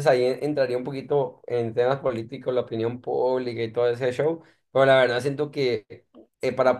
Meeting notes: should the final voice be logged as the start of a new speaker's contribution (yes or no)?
no